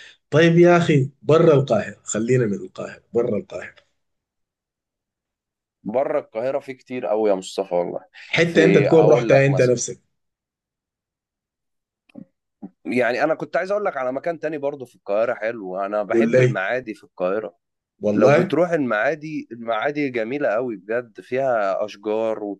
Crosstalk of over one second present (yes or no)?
yes